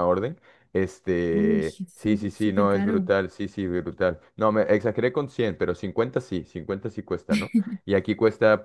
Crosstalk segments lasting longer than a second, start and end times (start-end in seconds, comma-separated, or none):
1.3-3.1